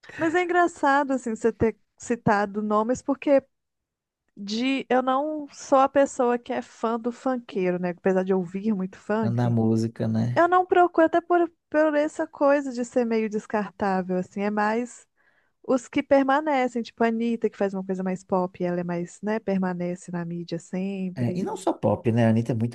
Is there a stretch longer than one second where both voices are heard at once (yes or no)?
no